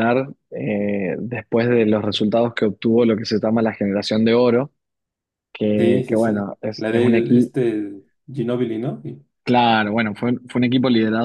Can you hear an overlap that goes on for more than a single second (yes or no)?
yes